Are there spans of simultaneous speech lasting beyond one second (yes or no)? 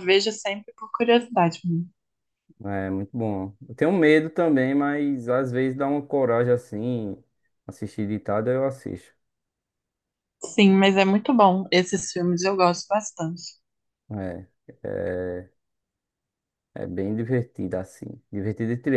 no